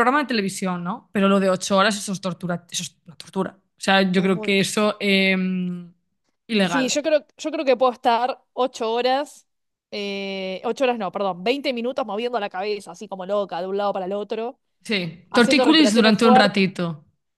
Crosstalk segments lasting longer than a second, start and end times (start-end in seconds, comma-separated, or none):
15.3-16.6